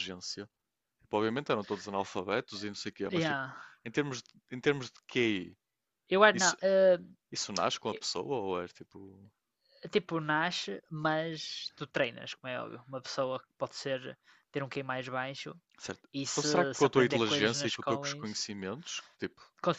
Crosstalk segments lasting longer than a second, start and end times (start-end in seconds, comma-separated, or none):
16.1-18.2